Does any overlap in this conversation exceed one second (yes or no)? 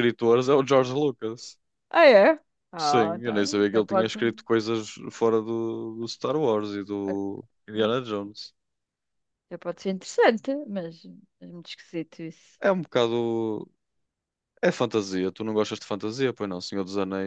yes